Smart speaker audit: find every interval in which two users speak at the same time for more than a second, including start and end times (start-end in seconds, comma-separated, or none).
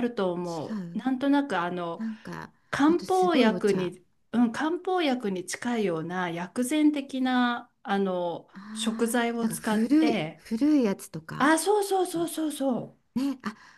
2.7-3.9, 8.5-10.4